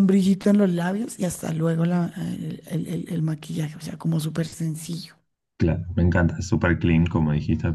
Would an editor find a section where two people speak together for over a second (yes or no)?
no